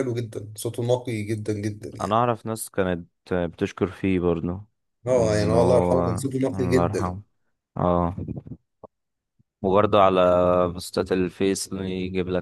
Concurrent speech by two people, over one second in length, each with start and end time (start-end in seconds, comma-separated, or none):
5.1-7.2